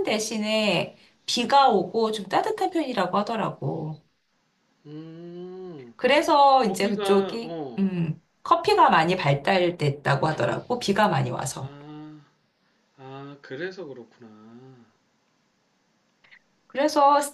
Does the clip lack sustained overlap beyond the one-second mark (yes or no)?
no